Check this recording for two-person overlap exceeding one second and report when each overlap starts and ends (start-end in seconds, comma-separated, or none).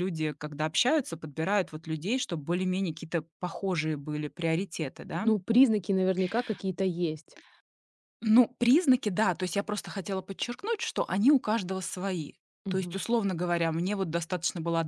none